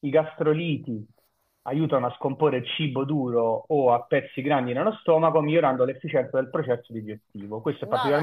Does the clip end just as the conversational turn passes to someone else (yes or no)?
no